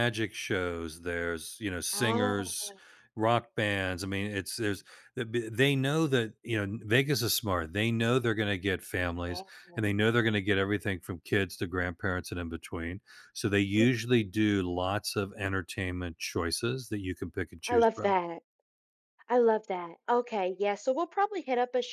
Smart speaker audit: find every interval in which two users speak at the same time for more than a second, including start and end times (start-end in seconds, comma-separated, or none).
none